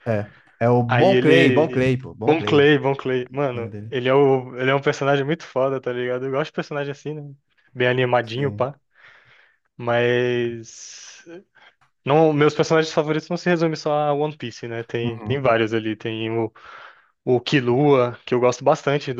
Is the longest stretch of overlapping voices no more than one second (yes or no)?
no